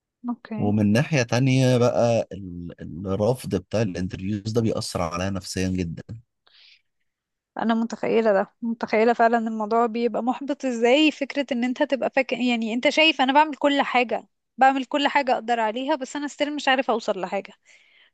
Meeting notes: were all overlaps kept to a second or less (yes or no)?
yes